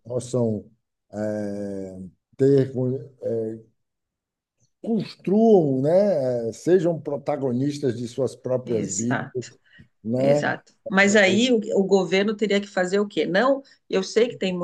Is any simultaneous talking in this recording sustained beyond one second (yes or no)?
no